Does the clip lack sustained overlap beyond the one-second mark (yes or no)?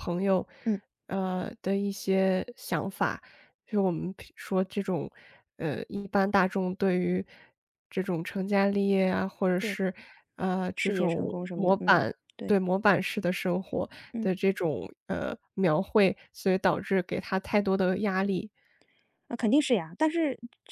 no